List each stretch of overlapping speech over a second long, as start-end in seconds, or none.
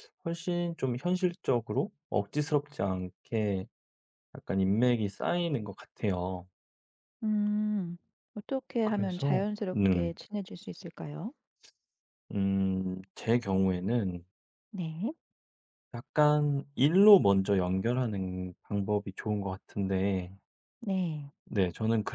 8.8-10.1